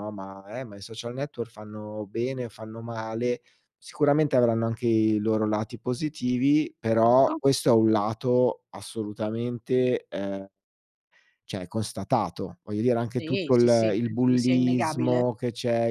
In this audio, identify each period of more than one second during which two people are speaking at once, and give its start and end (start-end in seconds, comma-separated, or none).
13.1-15.3